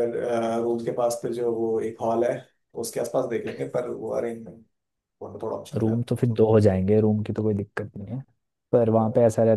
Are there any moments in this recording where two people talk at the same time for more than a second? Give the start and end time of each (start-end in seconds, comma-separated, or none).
none